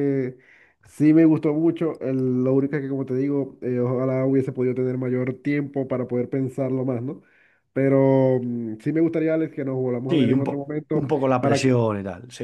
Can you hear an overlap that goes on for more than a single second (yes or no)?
yes